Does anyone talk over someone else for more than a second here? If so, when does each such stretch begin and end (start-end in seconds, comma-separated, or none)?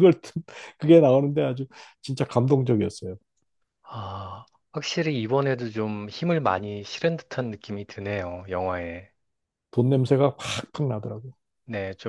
none